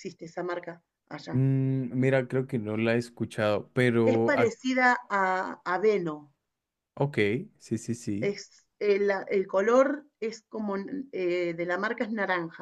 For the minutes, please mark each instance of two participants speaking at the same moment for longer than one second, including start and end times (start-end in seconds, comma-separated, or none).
none